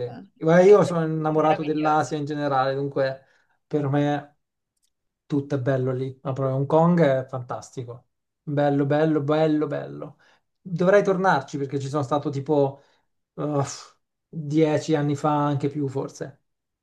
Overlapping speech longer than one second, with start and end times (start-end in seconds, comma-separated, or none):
0.6-2.3